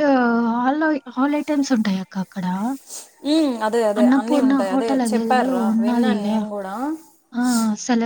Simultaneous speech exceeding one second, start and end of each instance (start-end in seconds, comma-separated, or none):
4.0-6.2